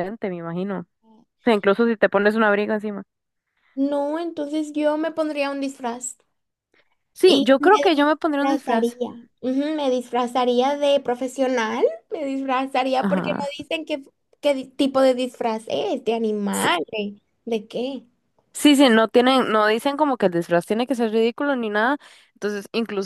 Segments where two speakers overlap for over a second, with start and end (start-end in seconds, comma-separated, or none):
7.2-9.0